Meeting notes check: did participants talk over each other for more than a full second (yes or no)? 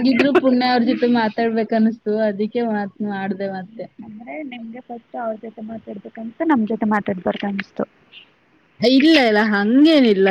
no